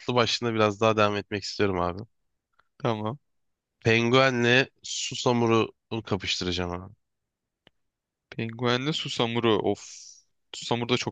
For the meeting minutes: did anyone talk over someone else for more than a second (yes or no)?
no